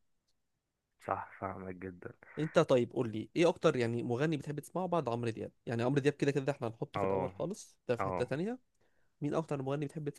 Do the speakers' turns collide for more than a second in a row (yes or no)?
no